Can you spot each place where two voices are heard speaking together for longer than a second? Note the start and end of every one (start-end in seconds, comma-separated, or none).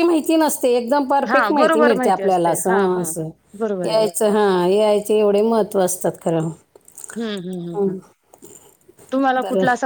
1.3-3.0